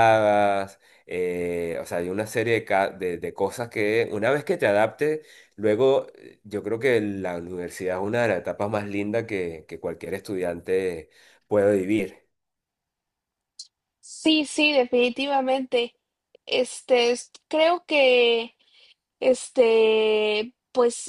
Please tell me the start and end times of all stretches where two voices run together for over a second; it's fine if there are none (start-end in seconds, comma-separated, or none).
none